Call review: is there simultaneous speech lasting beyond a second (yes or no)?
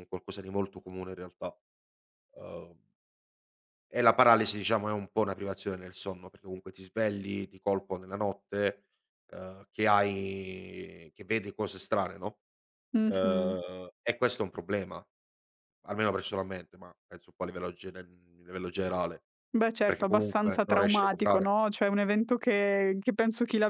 yes